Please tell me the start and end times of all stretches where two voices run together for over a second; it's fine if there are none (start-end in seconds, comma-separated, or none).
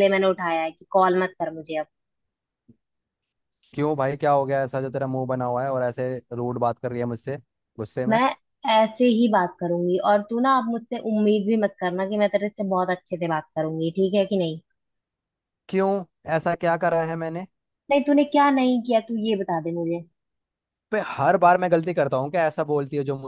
none